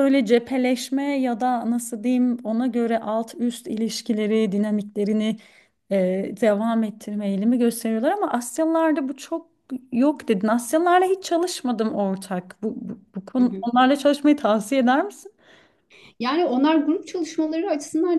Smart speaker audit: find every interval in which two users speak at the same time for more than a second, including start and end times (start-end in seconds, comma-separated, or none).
none